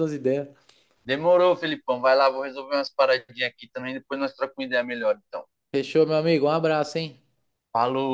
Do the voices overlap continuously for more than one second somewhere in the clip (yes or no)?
no